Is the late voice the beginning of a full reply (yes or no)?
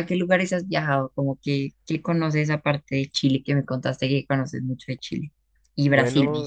yes